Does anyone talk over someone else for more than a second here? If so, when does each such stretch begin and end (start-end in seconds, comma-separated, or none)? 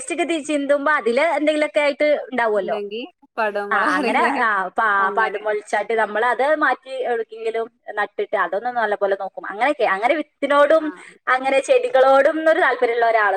none